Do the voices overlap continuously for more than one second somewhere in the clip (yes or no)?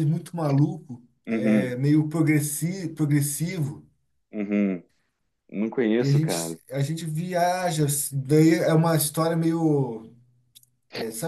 no